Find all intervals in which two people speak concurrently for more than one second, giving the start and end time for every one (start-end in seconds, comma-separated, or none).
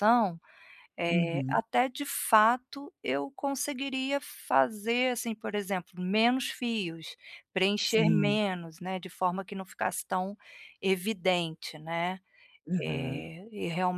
none